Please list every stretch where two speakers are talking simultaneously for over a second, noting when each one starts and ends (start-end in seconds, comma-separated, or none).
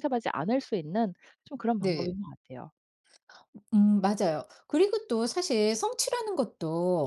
none